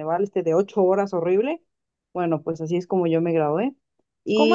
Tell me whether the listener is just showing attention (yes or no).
no